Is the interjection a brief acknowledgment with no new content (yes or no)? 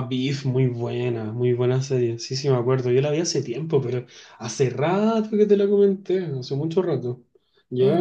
no